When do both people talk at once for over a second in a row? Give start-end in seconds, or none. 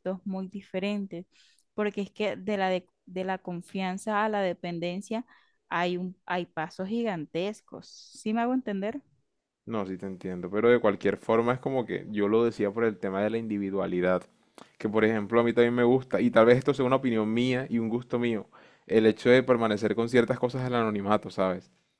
none